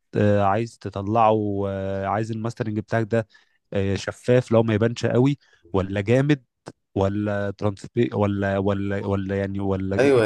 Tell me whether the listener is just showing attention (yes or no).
no